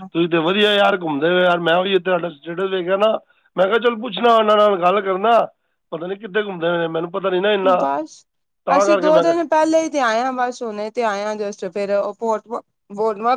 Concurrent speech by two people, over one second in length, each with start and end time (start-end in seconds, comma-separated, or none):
none